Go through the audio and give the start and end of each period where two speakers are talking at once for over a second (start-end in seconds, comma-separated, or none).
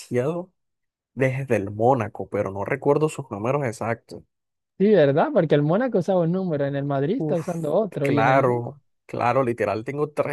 7.2-8.6